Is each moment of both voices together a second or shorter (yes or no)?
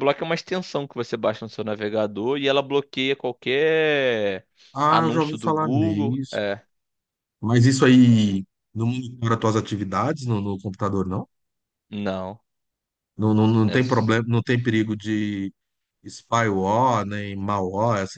no